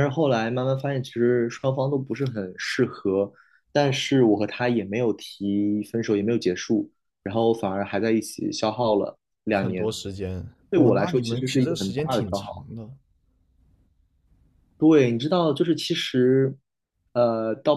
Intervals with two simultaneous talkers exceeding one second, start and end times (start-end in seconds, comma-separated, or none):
10.7-12.7